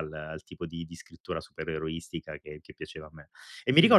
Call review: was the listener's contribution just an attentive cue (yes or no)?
no